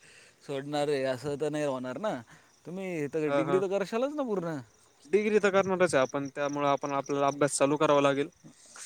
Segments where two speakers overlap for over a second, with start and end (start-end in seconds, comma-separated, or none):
none